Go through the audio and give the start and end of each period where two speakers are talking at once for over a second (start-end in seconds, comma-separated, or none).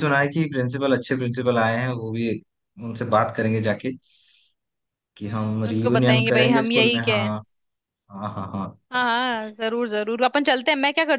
5.2-7.3